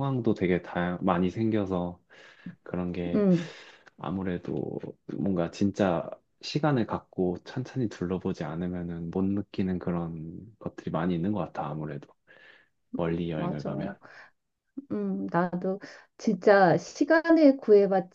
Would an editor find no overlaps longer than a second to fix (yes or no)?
yes